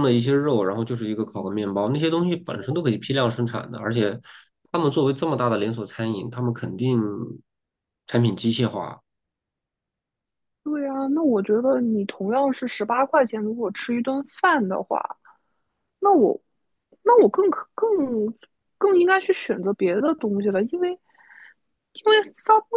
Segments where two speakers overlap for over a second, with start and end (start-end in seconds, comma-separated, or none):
none